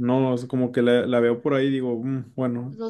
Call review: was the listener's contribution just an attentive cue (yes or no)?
no